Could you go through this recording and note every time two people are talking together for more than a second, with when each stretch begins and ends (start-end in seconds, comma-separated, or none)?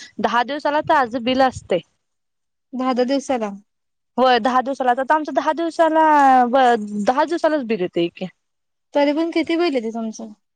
none